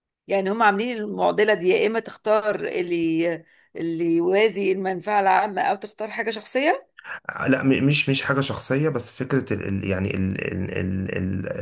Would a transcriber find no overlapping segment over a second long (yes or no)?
yes